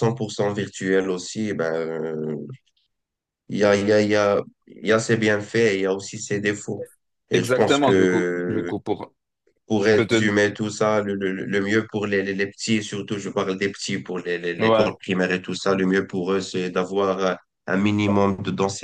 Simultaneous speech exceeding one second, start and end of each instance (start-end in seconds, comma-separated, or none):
7.3-8.7